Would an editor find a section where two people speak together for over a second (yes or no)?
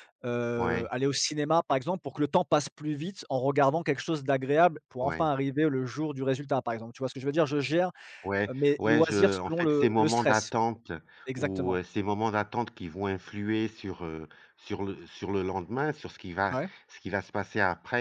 yes